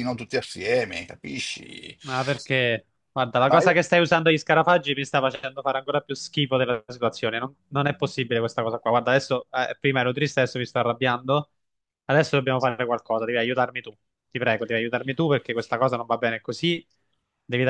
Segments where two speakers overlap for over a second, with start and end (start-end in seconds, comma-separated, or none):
none